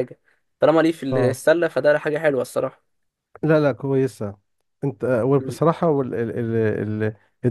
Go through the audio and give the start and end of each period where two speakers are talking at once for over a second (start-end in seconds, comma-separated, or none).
none